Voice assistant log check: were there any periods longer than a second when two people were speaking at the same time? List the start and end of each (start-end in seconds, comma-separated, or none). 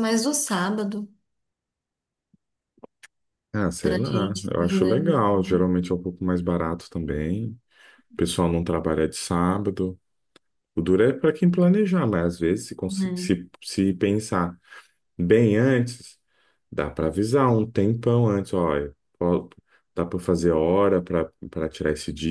3.8-5.2